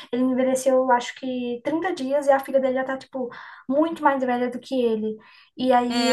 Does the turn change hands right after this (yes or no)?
yes